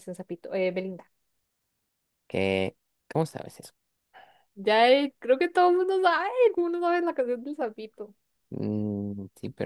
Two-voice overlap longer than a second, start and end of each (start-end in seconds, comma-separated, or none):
none